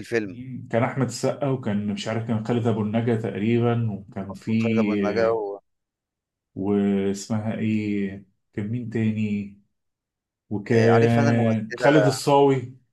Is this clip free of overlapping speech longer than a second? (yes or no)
no